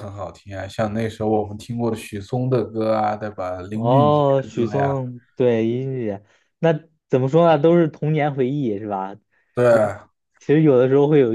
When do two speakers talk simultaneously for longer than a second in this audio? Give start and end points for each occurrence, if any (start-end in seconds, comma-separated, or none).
3.7-5.0